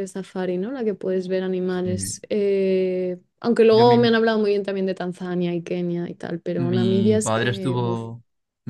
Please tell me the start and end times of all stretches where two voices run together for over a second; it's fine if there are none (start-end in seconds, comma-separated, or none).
6.6-8.0